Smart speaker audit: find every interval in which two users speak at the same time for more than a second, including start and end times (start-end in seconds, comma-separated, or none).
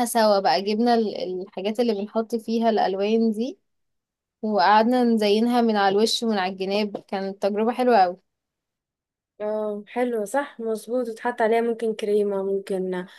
none